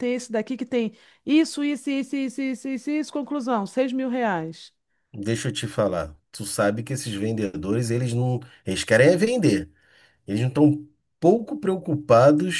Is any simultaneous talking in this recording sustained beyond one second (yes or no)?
no